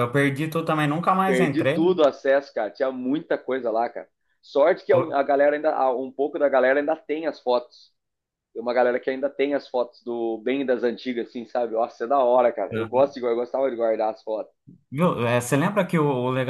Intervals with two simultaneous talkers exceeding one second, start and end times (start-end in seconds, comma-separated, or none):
none